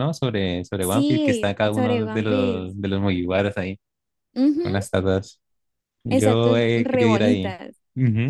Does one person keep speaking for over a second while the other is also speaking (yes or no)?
yes